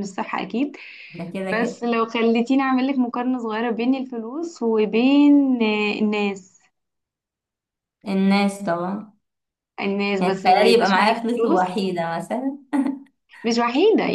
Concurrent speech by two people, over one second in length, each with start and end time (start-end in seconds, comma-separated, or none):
10.2-11.7